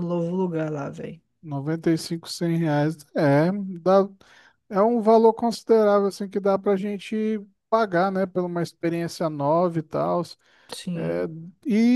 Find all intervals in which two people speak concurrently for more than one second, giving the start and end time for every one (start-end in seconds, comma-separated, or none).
none